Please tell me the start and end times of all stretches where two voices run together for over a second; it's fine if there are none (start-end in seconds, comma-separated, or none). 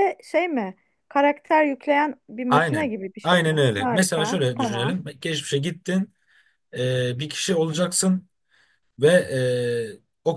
2.5-5.0